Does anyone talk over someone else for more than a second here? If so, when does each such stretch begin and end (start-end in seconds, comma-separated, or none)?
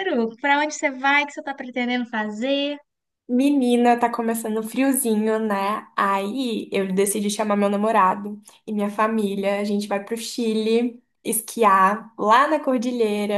none